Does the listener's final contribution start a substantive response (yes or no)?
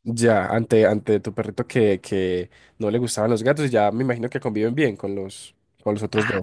yes